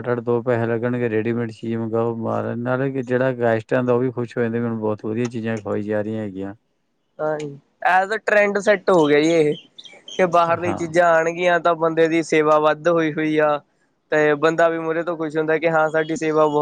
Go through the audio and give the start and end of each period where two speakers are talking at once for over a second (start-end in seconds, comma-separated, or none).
none